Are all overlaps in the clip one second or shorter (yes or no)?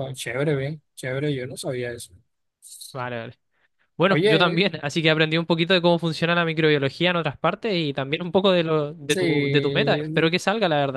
no